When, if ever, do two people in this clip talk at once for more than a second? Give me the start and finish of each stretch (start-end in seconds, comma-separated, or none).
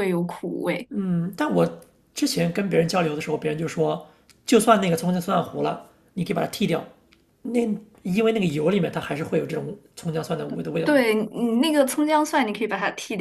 none